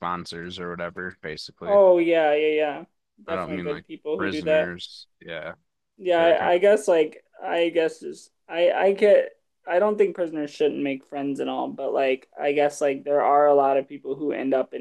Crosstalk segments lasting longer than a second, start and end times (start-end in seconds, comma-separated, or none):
3.3-4.7